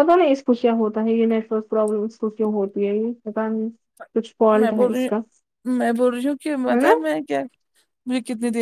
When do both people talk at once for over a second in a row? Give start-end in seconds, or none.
none